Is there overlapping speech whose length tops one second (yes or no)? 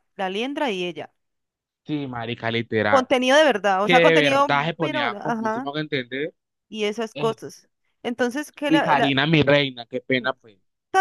yes